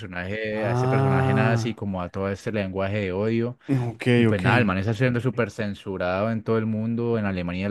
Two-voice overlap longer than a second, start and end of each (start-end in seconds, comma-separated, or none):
0.5-1.8